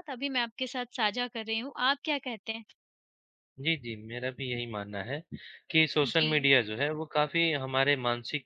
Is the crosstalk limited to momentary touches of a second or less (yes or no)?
yes